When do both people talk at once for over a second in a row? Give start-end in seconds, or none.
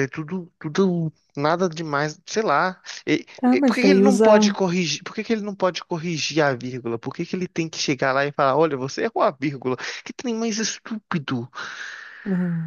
3.4-4.6